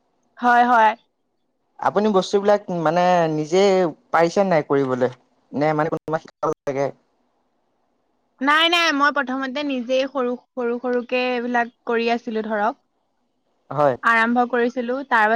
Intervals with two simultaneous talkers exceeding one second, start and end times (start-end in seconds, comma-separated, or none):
none